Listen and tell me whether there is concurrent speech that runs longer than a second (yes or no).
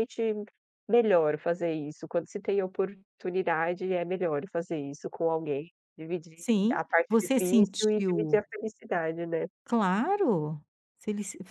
yes